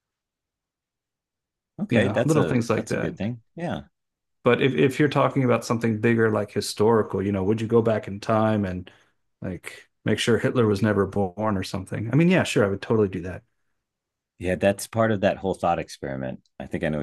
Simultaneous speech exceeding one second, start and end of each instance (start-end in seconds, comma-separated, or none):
1.9-3.3